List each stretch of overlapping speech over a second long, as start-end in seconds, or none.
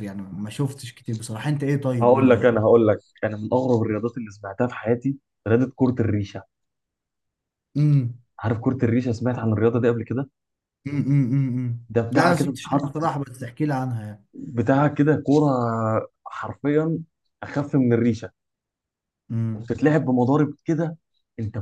11.9-13.1